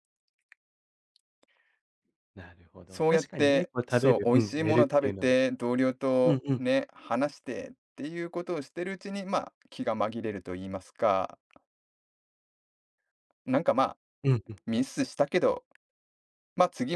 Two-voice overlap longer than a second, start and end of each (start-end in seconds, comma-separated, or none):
2.9-5.4